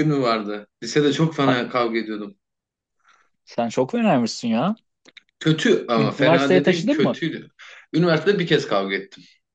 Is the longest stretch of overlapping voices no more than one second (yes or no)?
no